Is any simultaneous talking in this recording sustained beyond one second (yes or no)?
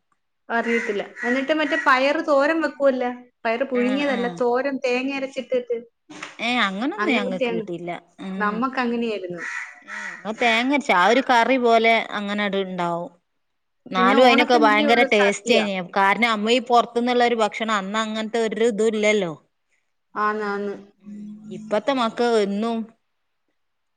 yes